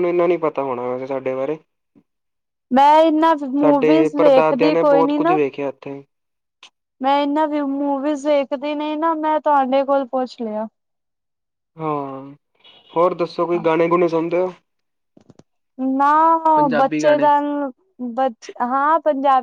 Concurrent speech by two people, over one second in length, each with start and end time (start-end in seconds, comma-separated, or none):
3.6-5.4